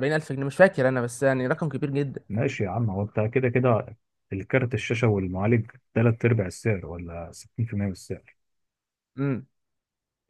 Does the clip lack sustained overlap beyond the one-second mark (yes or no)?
yes